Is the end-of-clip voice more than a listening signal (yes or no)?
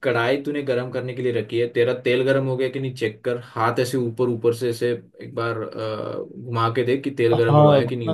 yes